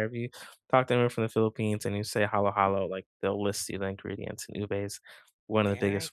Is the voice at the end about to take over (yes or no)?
yes